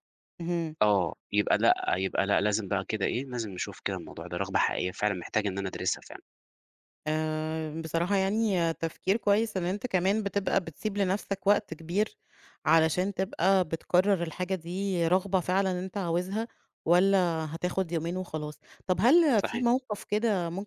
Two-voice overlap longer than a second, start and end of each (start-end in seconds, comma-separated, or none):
none